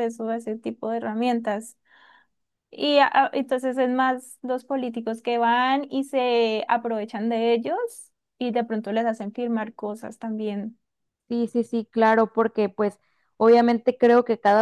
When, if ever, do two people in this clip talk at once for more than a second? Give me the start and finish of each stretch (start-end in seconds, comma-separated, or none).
none